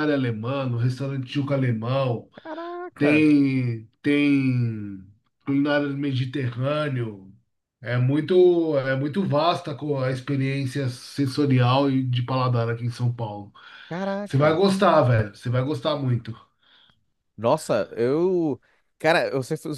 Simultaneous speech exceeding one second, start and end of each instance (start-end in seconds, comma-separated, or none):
none